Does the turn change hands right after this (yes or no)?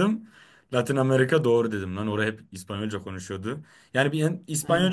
no